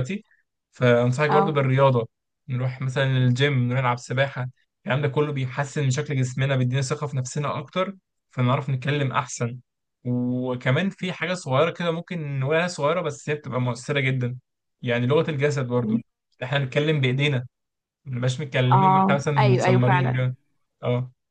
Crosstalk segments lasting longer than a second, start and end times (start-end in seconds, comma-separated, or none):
18.7-20.2